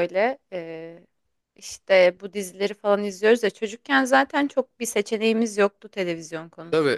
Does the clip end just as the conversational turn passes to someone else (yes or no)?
yes